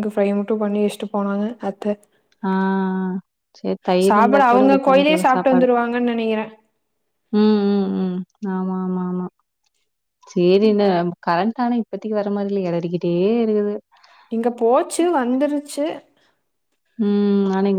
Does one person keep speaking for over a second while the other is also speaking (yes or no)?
yes